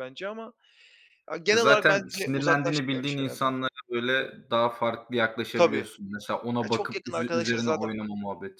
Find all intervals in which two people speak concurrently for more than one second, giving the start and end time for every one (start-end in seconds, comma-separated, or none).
1.5-3.5, 6.6-7.9